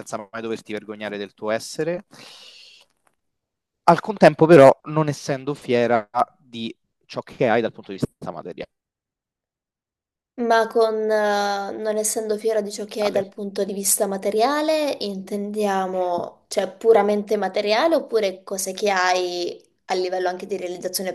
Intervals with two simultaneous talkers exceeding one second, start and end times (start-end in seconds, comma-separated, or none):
none